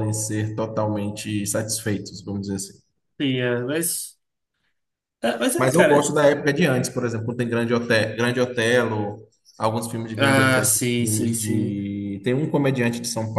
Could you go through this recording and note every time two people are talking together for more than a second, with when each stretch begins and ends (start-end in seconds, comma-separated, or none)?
10.2-11.8